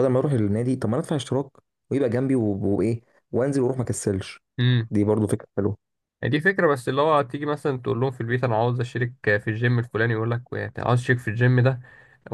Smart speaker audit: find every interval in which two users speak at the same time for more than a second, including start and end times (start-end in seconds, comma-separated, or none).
none